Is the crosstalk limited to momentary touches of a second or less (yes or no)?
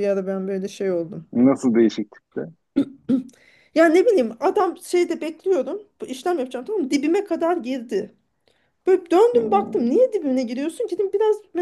yes